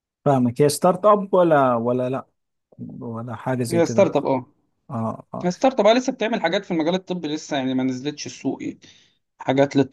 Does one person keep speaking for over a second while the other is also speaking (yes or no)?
no